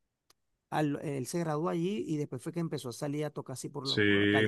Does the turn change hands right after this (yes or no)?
yes